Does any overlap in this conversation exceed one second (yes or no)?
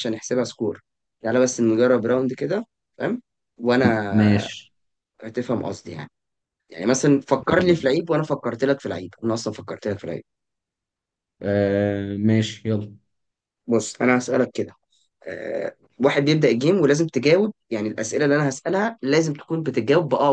no